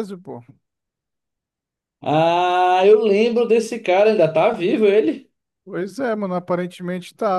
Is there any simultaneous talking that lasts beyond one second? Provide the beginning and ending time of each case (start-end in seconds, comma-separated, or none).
none